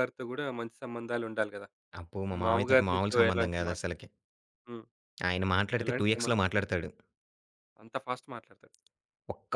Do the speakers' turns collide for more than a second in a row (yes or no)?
yes